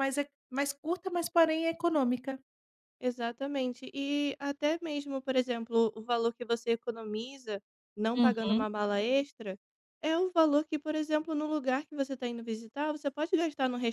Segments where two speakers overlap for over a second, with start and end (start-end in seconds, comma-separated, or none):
none